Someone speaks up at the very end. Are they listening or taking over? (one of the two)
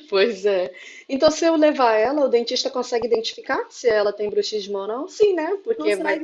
taking over